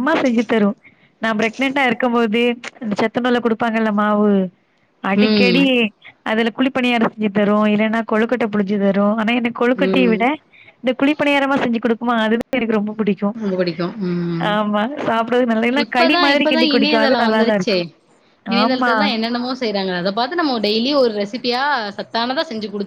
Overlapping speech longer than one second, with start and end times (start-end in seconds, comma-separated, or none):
15.8-17.8